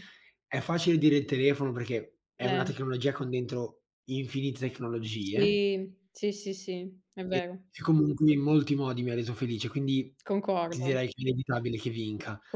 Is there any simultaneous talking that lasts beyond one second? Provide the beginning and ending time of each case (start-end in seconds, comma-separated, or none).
none